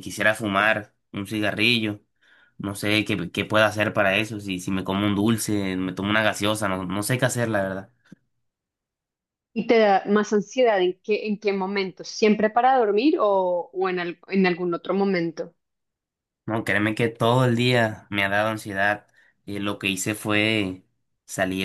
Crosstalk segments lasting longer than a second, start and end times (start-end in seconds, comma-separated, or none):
none